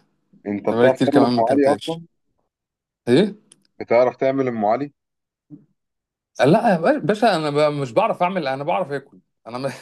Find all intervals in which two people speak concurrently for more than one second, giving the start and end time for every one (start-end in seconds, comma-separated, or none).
0.7-2.0